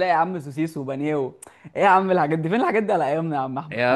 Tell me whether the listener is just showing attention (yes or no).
no